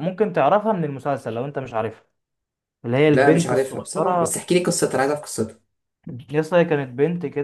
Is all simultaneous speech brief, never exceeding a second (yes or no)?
no